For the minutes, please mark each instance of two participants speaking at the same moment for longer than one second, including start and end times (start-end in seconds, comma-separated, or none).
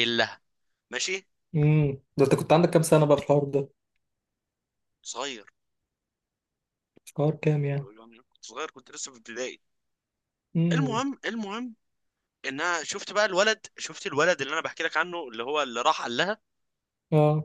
none